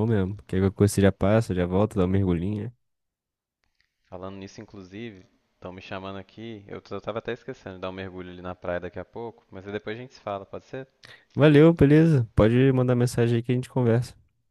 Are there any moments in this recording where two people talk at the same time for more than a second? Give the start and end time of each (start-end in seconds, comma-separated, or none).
none